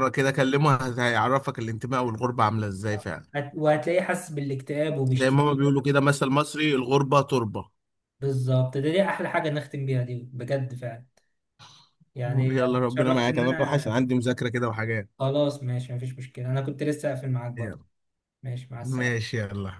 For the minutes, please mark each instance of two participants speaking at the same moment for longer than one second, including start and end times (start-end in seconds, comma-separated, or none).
12.5-13.9